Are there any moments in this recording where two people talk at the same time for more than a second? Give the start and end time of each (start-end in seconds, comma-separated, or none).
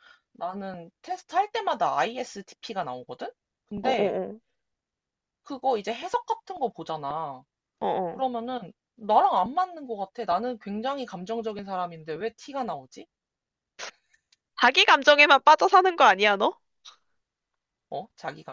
none